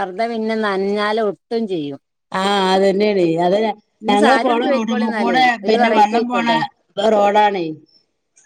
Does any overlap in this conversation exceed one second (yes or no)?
yes